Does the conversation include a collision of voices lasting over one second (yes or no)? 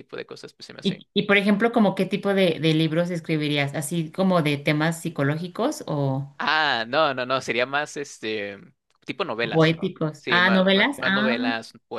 yes